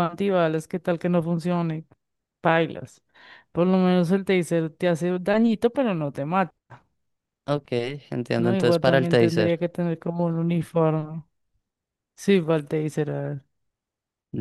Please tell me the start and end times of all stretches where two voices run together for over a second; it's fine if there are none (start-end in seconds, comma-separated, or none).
8.4-9.6